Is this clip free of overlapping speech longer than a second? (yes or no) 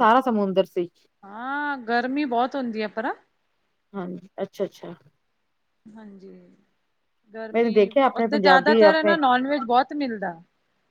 no